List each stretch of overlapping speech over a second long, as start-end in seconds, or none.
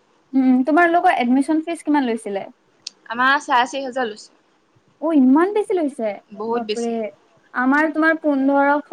none